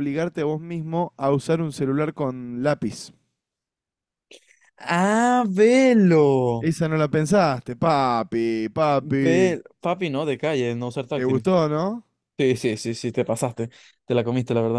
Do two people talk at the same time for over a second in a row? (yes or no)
no